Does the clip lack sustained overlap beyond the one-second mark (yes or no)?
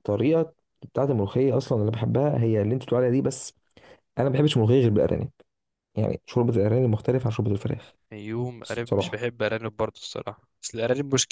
yes